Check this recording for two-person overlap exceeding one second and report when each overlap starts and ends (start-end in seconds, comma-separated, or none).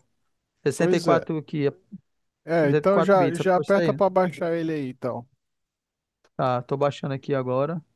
2.6-4.0